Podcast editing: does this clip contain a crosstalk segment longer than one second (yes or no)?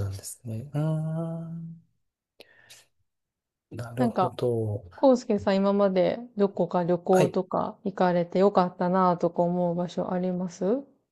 no